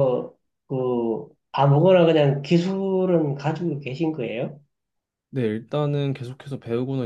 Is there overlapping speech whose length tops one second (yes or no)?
no